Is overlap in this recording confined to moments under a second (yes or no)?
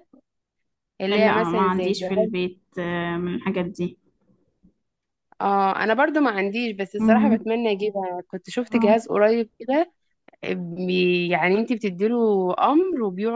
no